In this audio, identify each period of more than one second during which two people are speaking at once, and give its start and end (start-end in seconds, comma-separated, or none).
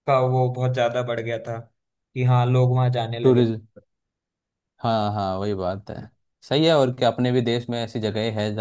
none